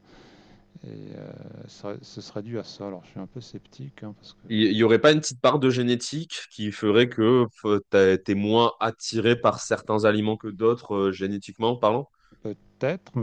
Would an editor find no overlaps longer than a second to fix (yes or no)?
yes